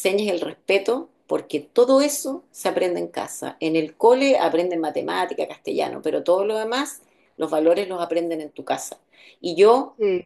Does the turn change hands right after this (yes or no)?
no